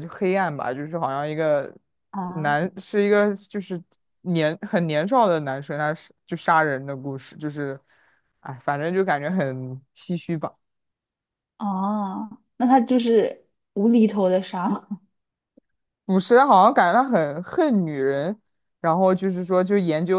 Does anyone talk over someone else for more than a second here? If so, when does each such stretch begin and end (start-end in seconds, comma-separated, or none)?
none